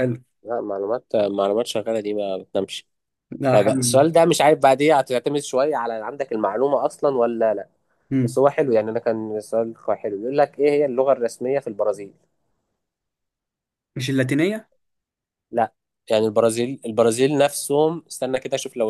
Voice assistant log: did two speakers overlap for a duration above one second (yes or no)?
no